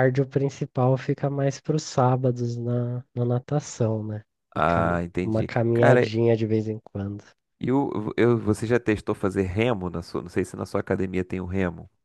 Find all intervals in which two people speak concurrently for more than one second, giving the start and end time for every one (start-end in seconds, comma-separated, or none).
4.5-6.0